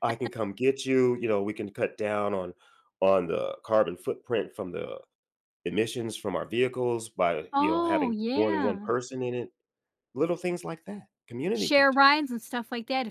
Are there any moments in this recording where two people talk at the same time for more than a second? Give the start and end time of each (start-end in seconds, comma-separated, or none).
7.5-8.9